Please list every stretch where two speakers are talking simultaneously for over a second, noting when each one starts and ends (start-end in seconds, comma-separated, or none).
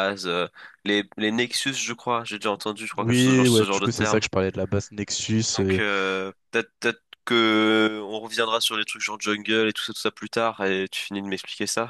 3.0-4.2